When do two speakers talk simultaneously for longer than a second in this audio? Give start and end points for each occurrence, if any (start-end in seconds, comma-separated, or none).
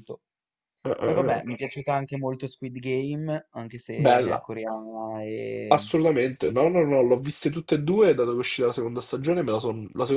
none